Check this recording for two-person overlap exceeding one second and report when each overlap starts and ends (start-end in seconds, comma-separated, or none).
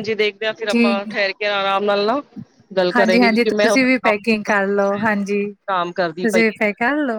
3.0-5.2